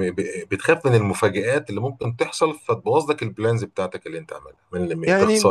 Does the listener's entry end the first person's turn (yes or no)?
yes